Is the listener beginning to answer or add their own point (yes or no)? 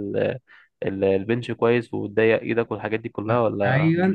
yes